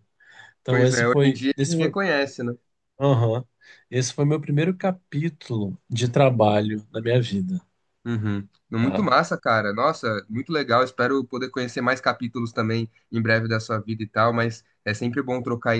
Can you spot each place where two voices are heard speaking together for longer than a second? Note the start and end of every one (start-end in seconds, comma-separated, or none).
0.7-1.9